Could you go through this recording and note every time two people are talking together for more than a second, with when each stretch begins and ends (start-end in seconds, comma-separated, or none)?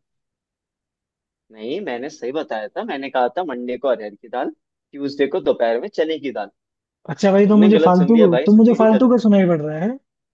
7.3-9.2